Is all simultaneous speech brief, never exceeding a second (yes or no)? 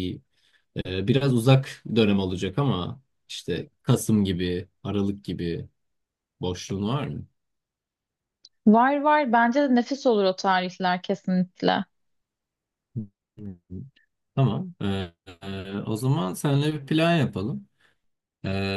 yes